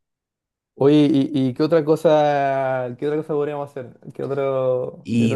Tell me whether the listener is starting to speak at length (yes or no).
yes